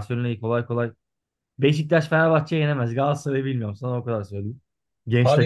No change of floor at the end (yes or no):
yes